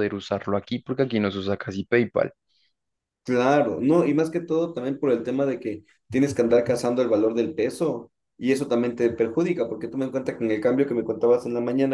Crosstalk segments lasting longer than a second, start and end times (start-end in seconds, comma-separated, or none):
none